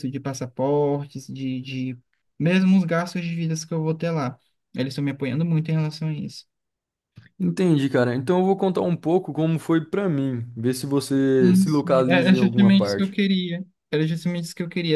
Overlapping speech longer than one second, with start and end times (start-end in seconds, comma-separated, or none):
11.4-13.2